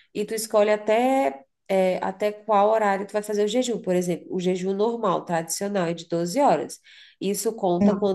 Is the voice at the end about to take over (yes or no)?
no